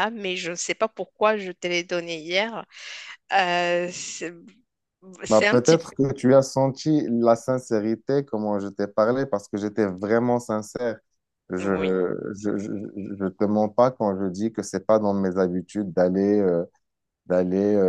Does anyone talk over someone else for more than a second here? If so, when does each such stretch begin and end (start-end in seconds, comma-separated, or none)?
none